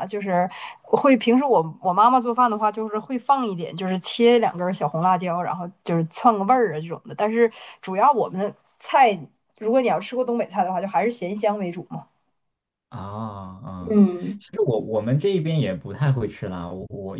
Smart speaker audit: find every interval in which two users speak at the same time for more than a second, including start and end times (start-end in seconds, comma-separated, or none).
none